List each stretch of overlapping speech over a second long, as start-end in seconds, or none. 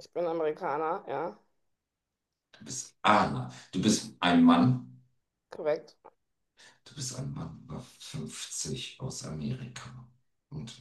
none